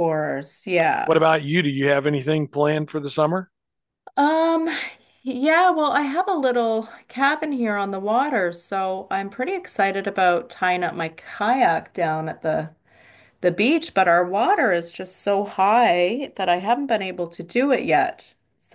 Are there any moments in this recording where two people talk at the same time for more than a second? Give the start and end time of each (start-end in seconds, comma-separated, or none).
none